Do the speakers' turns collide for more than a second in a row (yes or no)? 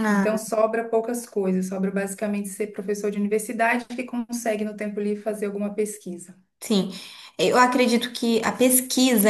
no